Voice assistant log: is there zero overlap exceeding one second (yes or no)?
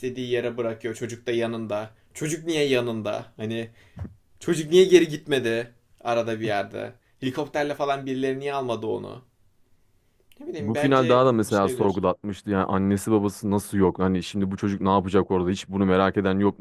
no